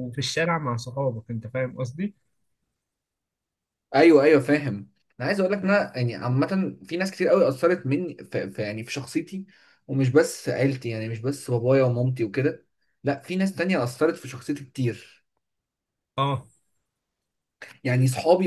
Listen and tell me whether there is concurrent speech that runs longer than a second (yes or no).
no